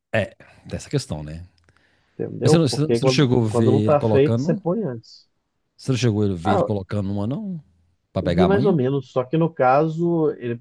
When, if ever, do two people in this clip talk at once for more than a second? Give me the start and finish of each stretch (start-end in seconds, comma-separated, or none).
2.4-4.6